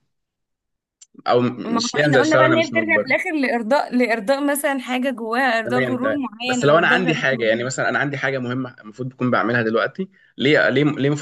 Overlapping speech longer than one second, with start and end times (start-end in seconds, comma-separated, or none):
1.6-3.1, 5.7-7.7